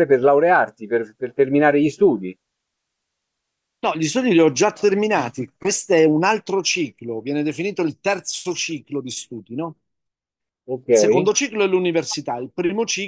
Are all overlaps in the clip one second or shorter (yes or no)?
yes